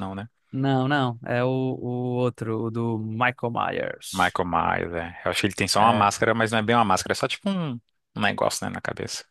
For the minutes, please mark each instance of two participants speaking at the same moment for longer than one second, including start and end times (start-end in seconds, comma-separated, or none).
none